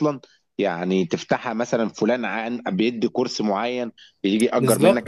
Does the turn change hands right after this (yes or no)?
yes